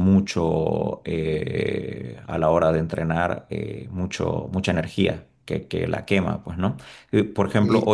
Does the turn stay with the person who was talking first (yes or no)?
yes